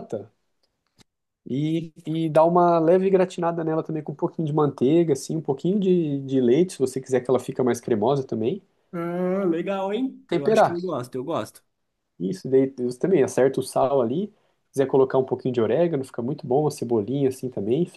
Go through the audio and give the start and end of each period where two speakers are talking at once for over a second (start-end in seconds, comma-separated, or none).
none